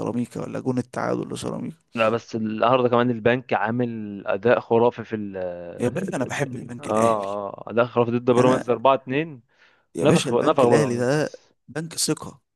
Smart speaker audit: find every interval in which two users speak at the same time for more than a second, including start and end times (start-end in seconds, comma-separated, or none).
10.0-11.3